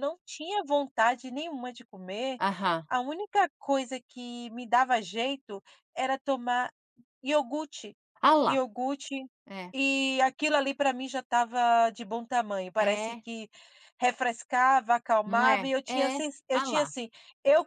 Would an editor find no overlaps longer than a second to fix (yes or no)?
no